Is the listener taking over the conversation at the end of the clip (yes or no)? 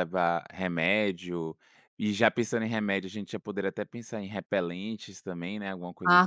yes